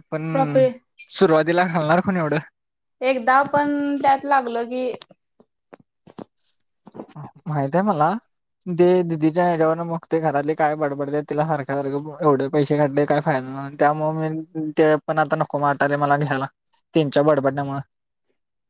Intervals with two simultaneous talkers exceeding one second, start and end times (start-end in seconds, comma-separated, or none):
none